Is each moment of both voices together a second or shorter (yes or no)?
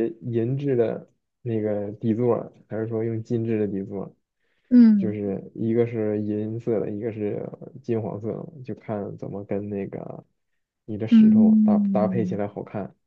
no